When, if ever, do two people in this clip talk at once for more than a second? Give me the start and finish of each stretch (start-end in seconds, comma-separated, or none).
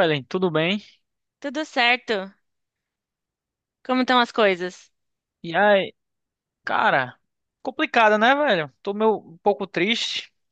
none